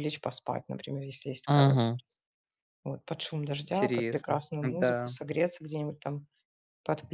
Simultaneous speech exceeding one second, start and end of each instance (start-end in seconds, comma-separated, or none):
3.7-5.1